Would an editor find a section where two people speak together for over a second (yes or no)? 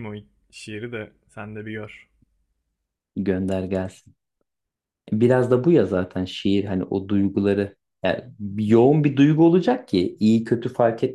no